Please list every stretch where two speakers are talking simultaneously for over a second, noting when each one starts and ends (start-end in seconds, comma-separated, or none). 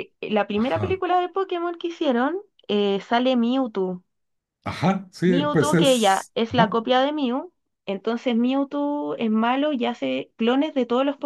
5.2-6.8